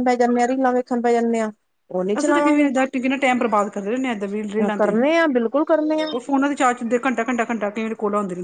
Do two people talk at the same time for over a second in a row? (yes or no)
no